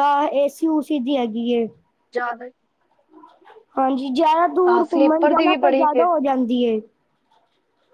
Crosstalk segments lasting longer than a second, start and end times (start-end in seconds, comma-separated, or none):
4.7-6.0